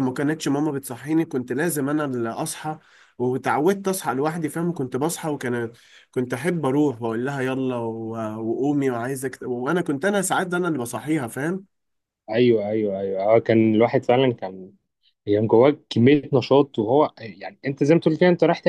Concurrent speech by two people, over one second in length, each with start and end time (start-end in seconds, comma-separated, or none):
none